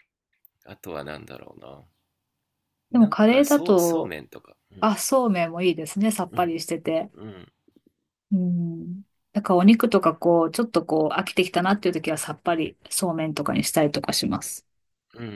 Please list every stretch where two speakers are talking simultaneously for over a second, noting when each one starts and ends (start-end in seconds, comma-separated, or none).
2.9-4.1